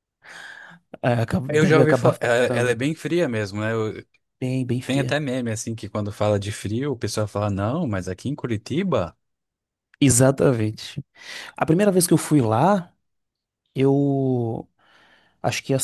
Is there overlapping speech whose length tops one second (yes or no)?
yes